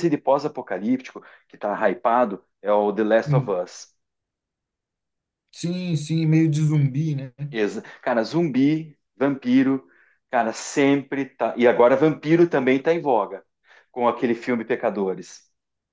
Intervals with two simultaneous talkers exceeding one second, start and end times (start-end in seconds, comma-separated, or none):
none